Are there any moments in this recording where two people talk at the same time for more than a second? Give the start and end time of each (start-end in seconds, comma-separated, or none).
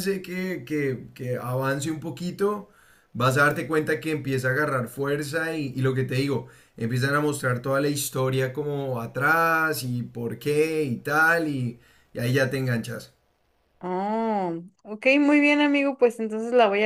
none